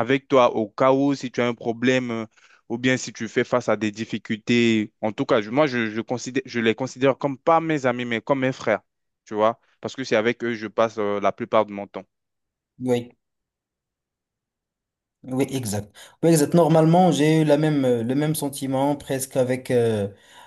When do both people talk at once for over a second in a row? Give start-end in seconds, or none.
none